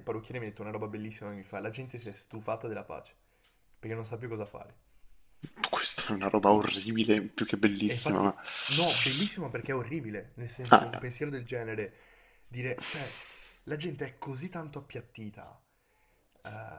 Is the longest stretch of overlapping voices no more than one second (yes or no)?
yes